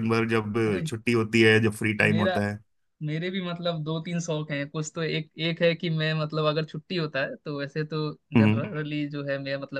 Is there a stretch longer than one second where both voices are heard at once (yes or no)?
no